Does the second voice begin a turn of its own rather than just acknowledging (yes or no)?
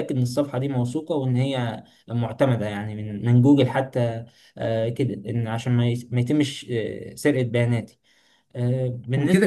yes